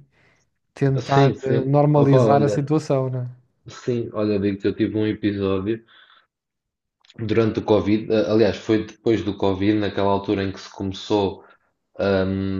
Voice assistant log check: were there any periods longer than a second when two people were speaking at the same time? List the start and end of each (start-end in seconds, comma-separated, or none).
1.0-2.7